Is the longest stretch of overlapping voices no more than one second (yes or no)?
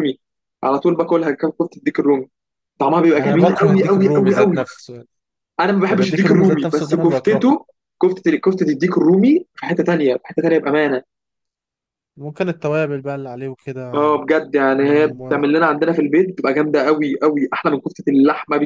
no